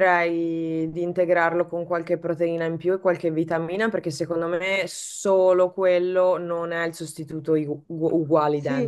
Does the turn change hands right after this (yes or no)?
yes